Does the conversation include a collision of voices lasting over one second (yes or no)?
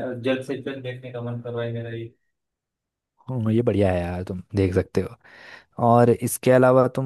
no